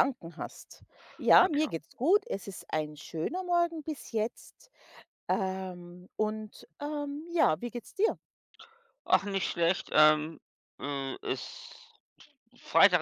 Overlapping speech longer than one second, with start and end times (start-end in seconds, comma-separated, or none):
none